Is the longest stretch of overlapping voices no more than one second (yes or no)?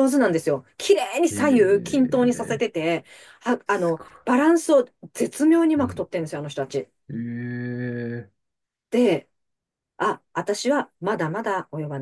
no